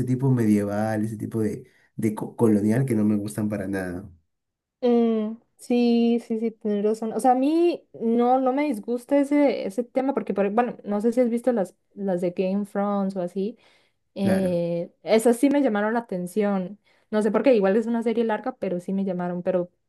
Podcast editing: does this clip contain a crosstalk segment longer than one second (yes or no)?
no